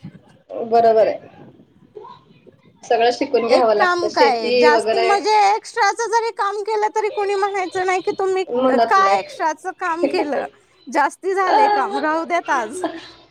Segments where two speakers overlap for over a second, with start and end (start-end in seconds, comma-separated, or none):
3.5-5.0